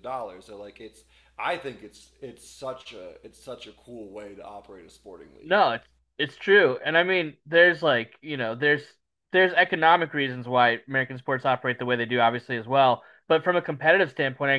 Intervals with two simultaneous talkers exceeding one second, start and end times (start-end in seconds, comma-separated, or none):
none